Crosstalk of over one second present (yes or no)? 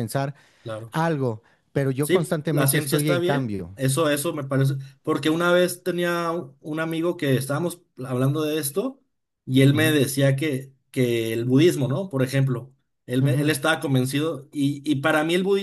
yes